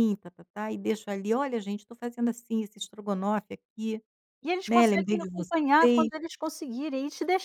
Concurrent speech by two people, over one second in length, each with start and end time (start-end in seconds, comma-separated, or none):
4.7-6.1